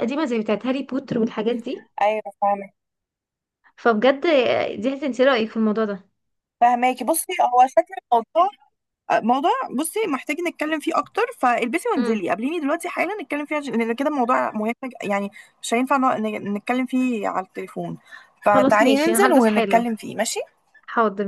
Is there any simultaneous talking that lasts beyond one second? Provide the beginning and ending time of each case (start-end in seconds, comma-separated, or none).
18.5-19.8